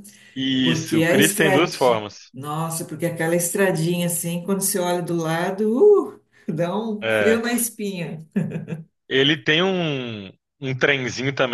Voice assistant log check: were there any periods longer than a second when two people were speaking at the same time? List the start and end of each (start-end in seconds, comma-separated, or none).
0.6-2.3